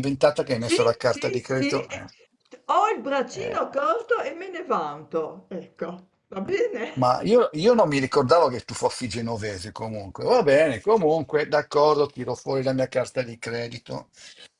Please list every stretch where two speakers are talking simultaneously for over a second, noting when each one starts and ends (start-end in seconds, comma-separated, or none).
0.6-2.1